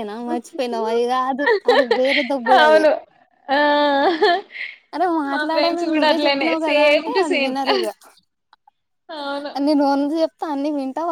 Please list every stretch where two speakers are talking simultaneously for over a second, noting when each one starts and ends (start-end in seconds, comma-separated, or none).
5.3-7.5